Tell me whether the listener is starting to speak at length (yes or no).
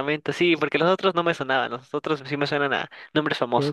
yes